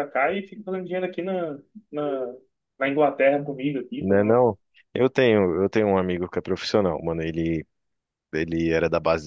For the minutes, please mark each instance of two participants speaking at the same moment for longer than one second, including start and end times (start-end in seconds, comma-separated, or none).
none